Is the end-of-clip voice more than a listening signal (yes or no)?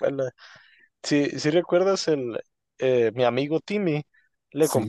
no